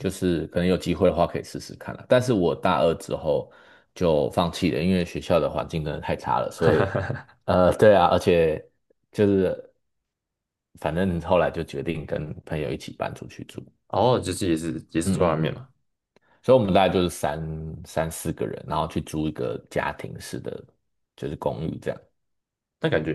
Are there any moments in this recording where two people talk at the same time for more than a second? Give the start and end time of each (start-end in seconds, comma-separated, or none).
none